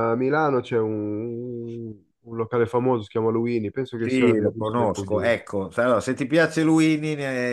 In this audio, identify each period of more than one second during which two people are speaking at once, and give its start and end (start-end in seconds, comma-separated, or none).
4.0-5.5